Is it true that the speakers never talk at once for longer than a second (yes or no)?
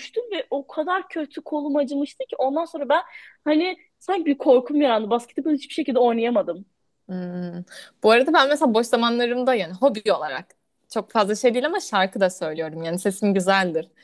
yes